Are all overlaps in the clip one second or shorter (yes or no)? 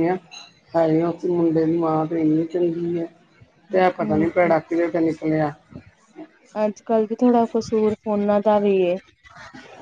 yes